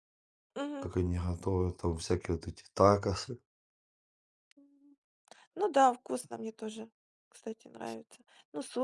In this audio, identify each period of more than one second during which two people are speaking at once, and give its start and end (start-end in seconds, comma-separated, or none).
none